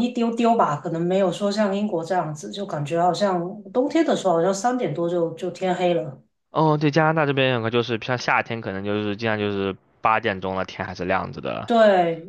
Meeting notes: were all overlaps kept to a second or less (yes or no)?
yes